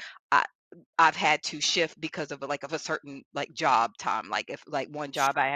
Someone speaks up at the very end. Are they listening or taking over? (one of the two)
listening